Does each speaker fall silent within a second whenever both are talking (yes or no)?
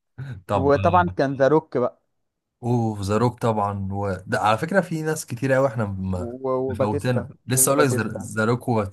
no